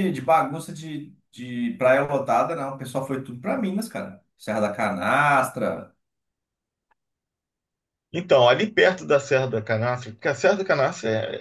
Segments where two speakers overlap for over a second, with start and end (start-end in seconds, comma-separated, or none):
none